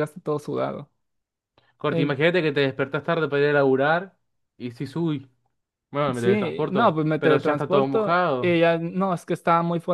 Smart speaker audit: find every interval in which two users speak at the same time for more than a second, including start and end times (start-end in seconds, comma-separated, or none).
6.2-8.6